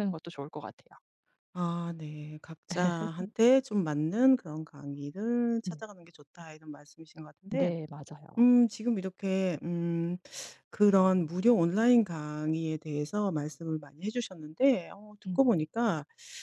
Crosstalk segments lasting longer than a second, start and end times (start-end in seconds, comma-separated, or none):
none